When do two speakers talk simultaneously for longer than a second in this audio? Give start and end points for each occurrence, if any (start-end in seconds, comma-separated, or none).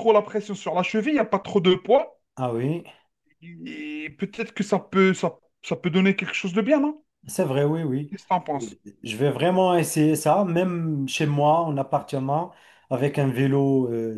none